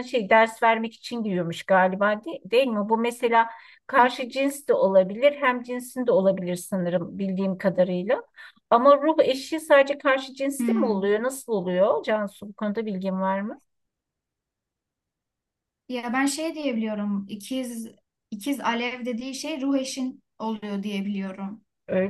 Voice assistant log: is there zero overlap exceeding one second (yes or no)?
yes